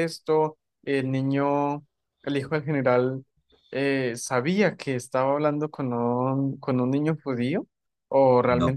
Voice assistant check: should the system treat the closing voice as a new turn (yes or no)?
no